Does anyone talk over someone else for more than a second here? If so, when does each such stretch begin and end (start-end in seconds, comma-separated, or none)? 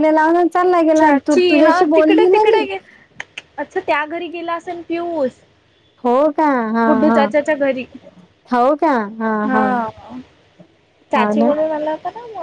1.0-2.7